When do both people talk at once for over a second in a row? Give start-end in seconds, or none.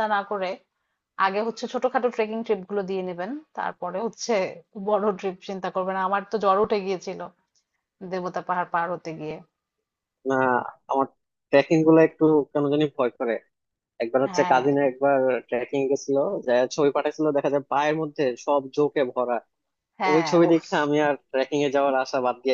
none